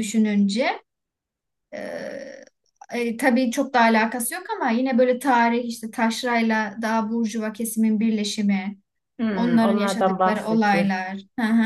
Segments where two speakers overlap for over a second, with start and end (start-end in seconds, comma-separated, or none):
9.3-10.9